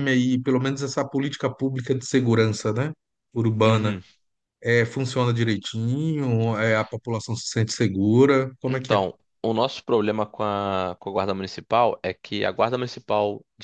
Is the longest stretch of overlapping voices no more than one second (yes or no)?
yes